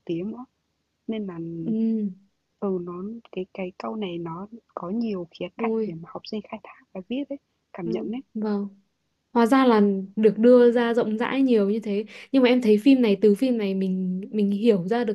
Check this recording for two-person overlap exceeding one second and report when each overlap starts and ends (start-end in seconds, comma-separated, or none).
none